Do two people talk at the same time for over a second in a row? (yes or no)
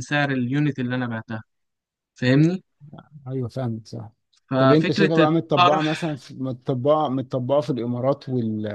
yes